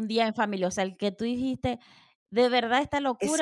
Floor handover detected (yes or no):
yes